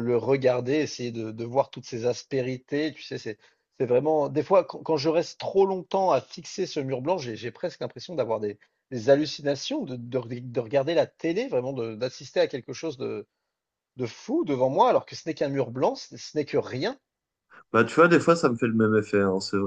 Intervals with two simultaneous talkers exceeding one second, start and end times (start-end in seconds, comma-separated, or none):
none